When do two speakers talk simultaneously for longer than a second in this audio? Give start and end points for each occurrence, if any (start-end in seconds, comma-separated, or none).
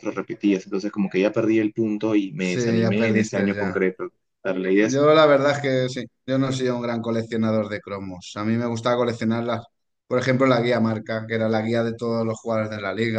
2.4-3.8